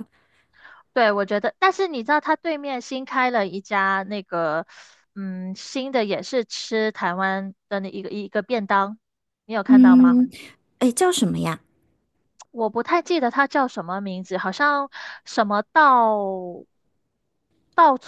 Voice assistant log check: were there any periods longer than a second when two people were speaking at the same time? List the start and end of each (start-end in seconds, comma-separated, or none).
none